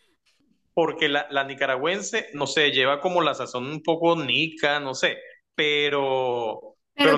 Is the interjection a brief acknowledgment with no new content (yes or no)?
no